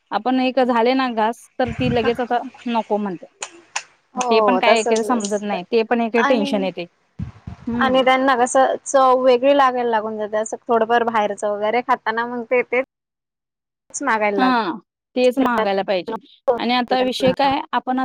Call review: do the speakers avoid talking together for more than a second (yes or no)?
no